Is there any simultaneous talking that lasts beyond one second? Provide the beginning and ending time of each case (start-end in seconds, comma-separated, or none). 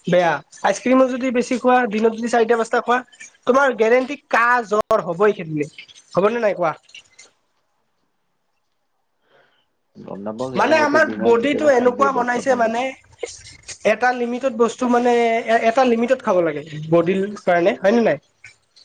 10.6-12.8